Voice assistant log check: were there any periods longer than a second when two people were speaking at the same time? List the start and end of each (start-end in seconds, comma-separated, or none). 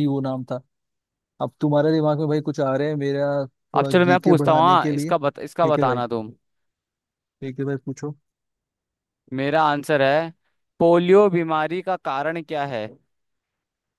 3.8-6.0